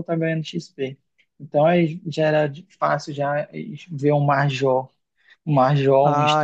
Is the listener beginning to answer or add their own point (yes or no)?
yes